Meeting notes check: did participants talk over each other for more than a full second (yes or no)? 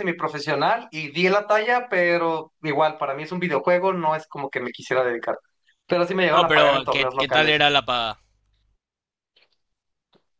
yes